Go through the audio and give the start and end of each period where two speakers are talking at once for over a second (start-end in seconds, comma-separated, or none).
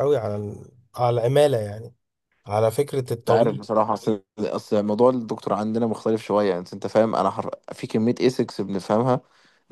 none